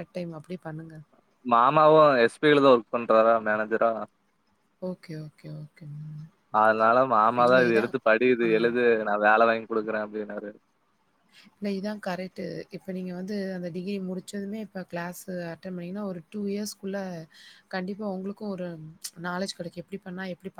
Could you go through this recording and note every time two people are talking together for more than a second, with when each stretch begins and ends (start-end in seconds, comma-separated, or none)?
none